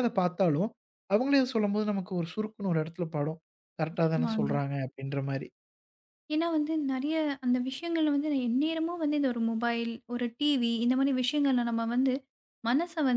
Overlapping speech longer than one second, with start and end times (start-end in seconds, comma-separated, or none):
none